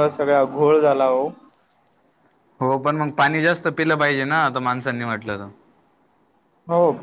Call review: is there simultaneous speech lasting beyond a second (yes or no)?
no